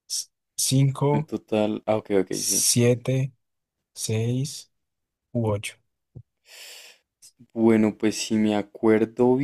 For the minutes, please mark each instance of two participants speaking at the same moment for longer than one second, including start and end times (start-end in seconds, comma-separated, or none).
none